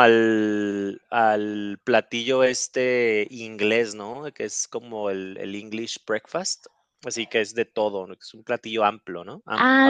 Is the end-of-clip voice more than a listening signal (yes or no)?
yes